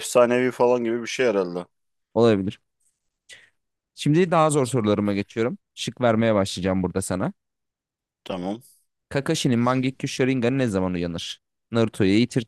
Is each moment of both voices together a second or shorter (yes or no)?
yes